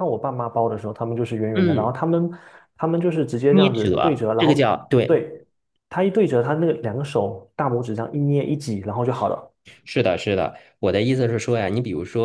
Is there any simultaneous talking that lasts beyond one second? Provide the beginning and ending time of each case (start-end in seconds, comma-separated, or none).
3.5-5.3